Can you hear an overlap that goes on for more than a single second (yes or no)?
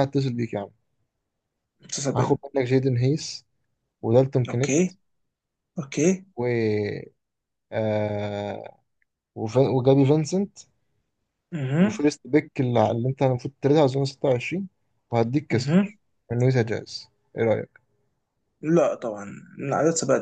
no